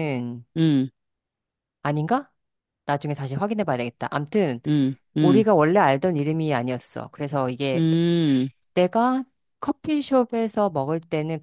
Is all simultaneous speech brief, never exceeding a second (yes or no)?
yes